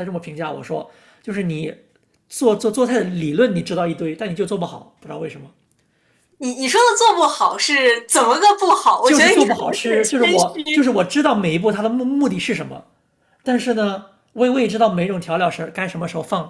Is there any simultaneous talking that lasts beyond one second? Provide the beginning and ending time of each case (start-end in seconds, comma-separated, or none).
9.0-10.9